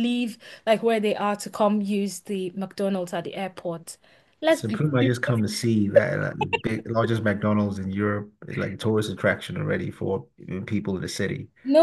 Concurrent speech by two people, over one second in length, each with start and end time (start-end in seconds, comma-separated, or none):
none